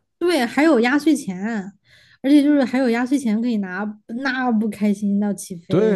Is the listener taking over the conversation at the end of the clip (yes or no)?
yes